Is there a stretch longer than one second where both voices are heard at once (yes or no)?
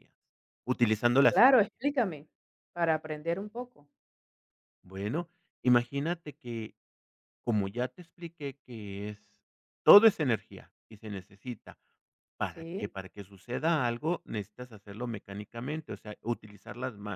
no